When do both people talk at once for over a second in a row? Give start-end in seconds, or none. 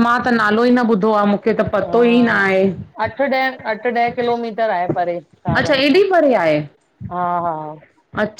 none